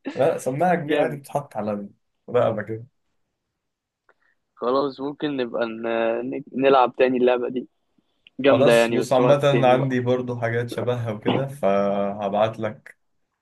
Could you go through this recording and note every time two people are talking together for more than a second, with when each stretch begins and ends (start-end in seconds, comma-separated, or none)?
8.5-10.0